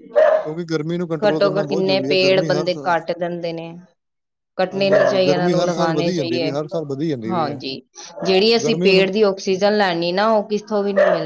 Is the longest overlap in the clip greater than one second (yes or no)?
yes